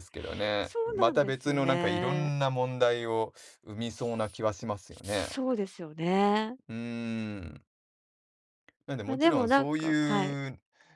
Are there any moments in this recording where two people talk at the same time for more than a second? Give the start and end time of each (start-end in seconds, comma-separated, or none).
0.6-2.3, 9.1-10.4